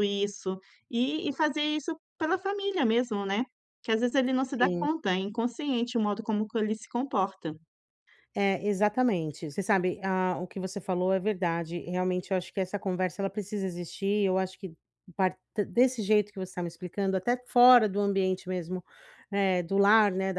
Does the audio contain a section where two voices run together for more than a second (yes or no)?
no